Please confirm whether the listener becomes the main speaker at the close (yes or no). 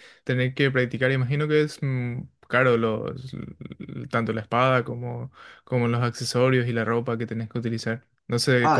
yes